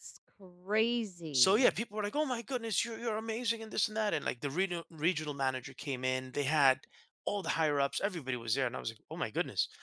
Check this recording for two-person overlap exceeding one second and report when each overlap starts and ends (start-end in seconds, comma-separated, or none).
none